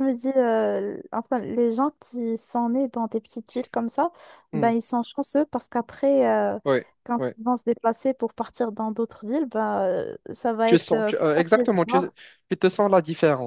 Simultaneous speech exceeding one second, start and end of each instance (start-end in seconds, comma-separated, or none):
10.7-12.0